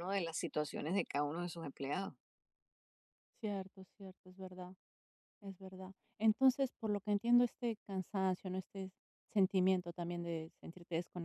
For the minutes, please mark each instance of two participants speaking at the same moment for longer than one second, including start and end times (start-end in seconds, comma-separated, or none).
none